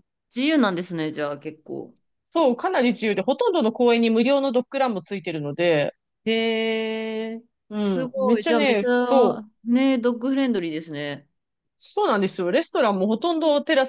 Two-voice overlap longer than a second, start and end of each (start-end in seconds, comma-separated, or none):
7.8-9.4